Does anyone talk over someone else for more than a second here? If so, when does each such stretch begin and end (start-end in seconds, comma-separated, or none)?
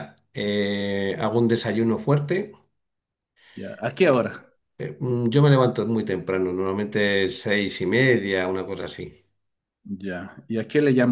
none